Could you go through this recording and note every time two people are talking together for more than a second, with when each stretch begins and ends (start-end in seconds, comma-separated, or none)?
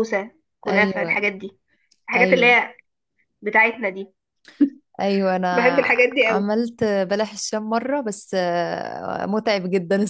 none